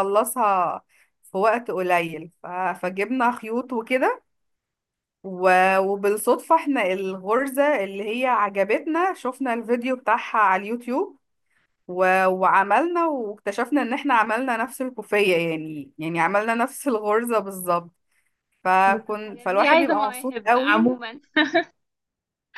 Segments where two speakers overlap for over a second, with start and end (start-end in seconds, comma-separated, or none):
18.9-21.0